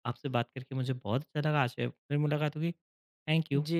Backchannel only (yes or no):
no